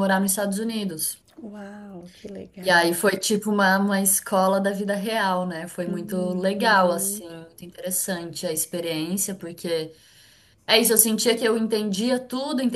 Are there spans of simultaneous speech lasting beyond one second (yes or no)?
yes